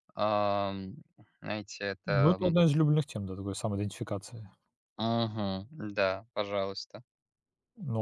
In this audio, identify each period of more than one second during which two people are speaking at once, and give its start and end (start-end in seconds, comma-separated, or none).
none